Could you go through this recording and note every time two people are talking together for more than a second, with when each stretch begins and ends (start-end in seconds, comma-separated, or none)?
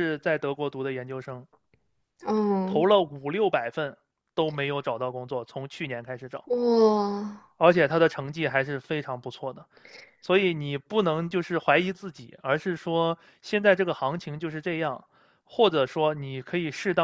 none